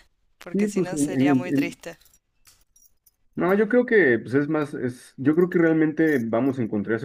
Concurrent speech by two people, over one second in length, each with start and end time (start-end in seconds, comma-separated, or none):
0.5-1.8